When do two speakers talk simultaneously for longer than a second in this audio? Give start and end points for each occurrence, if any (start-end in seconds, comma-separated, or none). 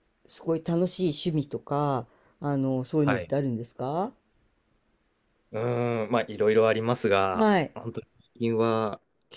none